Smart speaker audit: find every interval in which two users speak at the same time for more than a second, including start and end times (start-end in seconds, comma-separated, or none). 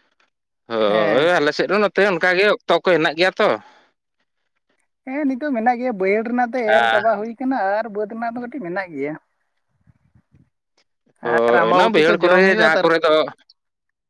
11.5-12.9